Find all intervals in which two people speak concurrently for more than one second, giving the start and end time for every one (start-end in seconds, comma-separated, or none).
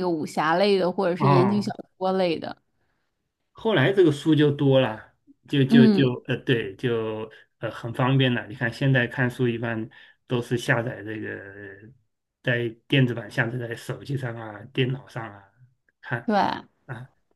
none